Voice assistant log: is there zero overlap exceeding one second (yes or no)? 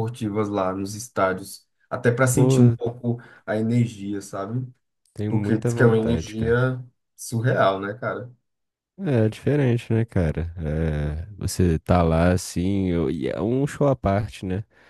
no